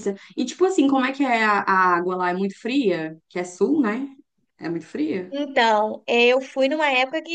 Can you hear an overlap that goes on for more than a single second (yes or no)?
no